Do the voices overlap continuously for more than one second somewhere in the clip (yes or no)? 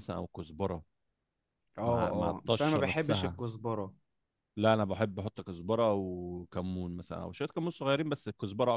yes